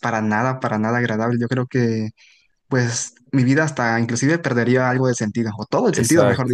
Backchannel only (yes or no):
no